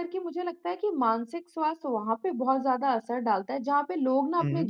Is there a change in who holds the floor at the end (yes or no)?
no